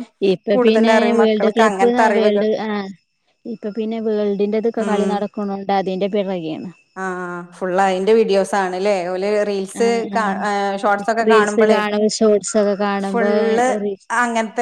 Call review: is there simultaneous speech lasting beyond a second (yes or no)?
yes